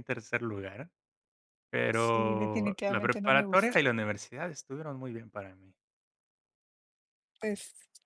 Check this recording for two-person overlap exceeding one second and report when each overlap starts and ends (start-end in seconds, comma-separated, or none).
1.9-3.8